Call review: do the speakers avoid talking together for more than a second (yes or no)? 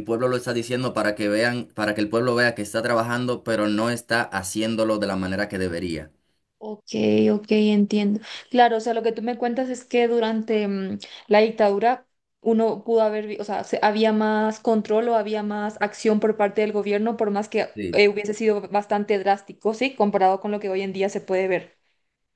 yes